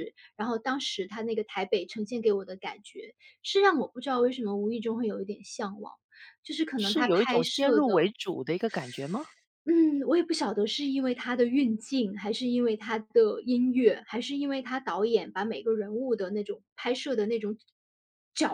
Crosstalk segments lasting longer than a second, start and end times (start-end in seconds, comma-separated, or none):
6.8-8.1